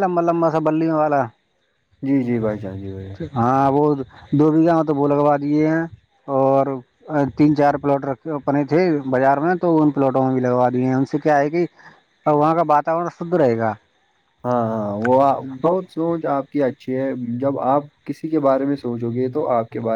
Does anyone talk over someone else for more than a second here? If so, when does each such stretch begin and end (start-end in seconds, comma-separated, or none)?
none